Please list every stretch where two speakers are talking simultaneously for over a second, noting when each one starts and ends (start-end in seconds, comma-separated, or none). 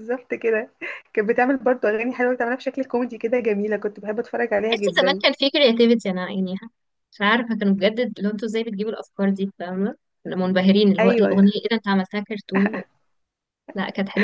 none